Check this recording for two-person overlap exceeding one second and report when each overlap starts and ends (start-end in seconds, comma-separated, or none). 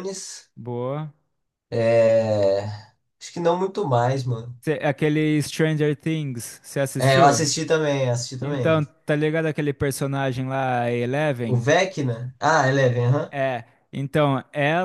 none